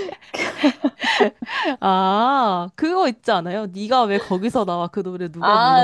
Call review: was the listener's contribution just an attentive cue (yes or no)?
no